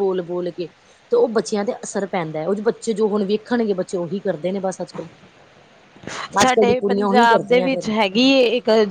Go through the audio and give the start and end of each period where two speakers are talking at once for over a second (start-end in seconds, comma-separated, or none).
6.4-7.9